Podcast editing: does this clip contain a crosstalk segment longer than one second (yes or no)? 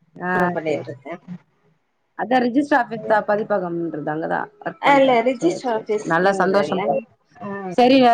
yes